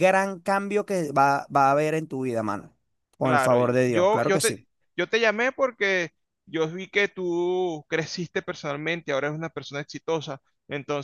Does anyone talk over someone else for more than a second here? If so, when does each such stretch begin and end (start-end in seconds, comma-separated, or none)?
3.2-4.5